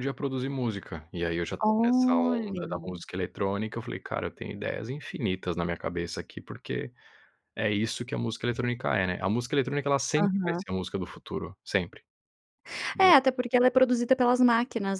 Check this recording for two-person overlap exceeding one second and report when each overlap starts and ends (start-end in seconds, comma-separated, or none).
1.6-3.0